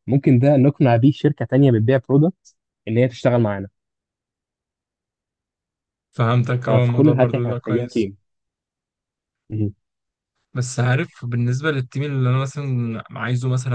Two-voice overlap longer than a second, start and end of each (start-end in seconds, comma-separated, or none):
6.7-8.1